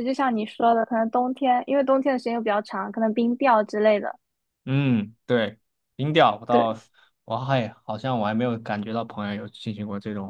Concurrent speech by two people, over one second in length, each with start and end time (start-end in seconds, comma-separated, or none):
none